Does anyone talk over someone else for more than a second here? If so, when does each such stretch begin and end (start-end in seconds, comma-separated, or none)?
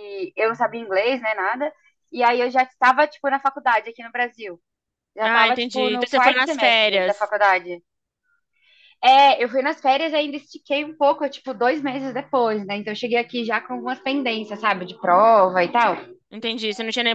5.2-7.3